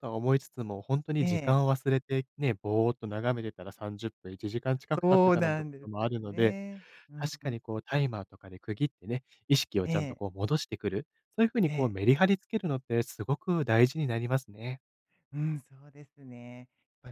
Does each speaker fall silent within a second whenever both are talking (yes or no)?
no